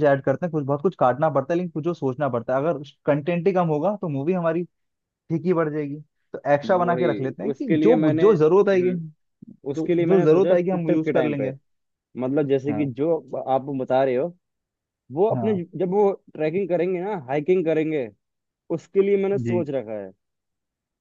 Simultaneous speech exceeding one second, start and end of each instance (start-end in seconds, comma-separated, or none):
6.7-8.9, 9.7-11.5